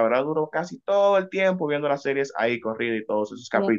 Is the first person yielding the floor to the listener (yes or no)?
yes